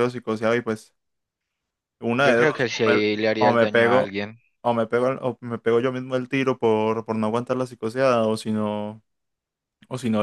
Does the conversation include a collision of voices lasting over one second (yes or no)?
yes